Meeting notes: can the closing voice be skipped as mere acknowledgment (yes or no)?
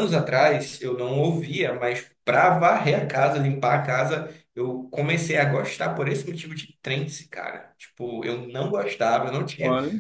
yes